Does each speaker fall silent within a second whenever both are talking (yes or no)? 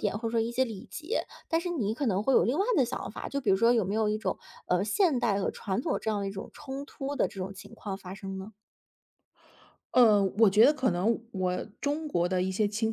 yes